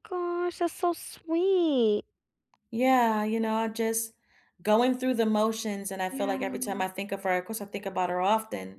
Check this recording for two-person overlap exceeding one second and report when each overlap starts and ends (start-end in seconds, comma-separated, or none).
none